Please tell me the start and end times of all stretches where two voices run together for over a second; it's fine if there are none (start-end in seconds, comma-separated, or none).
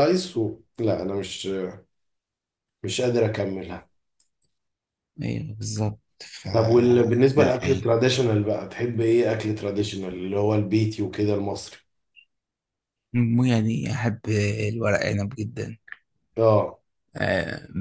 none